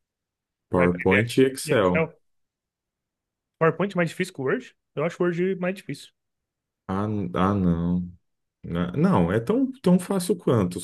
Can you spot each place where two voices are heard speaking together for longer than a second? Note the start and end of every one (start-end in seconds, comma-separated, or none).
0.7-2.1